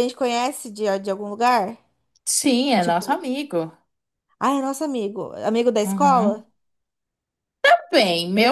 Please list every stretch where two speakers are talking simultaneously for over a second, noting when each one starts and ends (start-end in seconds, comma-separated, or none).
none